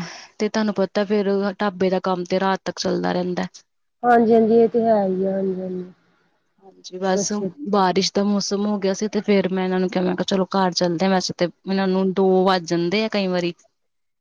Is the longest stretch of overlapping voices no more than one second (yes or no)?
yes